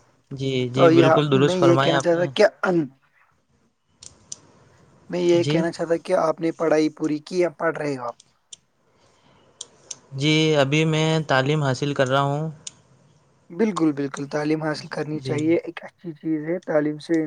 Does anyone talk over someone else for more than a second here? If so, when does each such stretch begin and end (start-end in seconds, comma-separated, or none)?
0.7-2.3